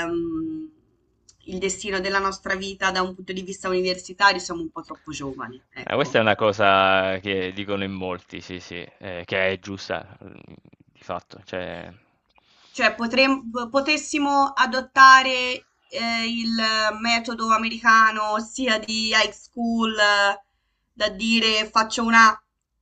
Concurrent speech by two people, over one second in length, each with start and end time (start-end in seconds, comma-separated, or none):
none